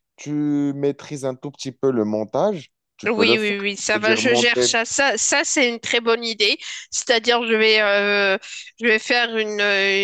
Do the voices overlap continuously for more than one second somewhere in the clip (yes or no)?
yes